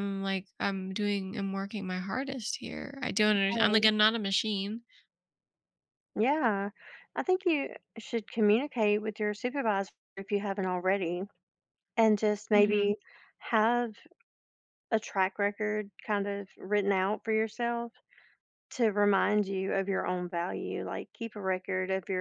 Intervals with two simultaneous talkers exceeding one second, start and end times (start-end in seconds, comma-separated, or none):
none